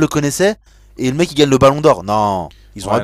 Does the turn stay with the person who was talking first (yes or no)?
no